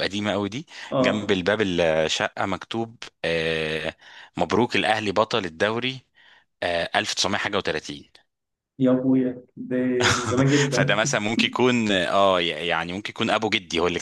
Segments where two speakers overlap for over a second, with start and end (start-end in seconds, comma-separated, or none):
none